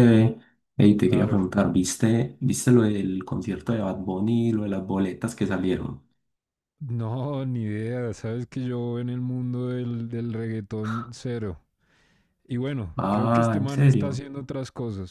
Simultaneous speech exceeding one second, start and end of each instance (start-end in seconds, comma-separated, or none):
13.0-14.2